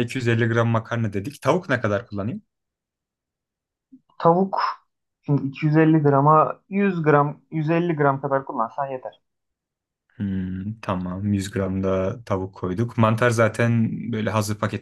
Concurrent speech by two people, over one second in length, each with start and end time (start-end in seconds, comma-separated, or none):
none